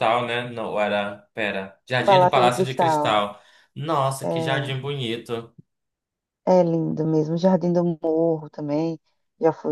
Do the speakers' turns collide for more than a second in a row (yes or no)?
yes